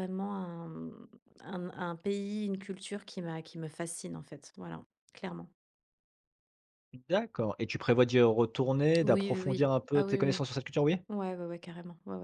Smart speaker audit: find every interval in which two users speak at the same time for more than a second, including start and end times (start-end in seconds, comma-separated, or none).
9.0-10.4